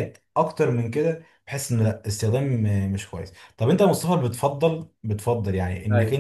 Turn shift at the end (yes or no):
no